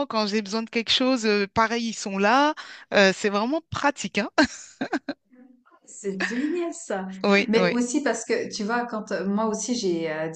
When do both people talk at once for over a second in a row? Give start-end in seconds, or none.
none